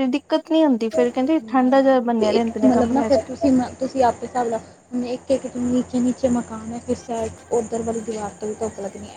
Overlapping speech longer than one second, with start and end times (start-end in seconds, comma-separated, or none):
1.0-3.2